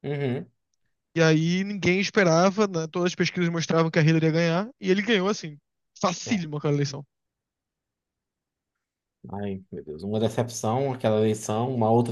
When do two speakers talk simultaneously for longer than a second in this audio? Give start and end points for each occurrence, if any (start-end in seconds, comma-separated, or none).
none